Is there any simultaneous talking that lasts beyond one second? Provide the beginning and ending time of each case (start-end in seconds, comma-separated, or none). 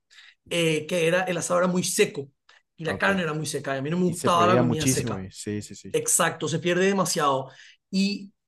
4.0-5.2